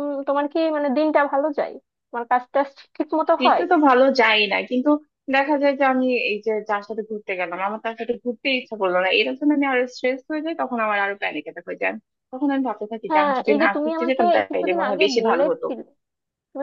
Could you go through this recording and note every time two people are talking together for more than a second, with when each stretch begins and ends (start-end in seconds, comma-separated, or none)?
13.1-15.7